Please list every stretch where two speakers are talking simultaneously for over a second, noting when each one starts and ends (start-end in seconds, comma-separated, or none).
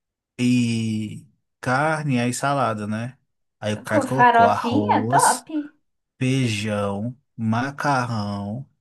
3.9-5.5